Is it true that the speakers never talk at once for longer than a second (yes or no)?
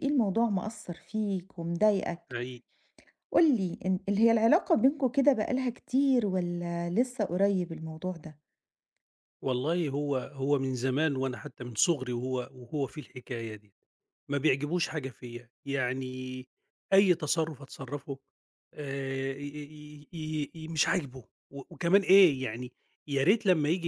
yes